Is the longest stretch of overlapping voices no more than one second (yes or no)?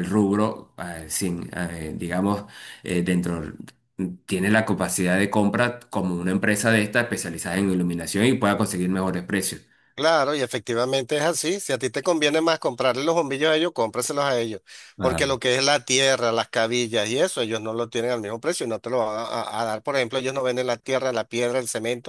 yes